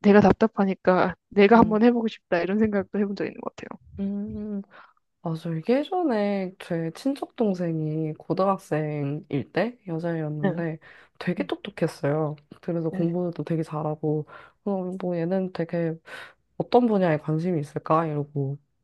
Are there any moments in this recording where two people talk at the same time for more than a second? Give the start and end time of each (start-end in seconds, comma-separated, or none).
none